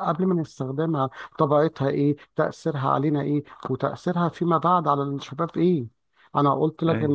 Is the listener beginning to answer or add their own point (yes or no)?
no